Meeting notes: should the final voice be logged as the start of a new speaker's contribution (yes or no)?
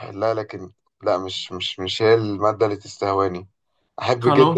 no